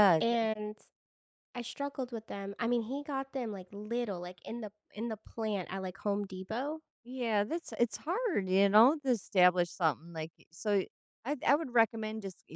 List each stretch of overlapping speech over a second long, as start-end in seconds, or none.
none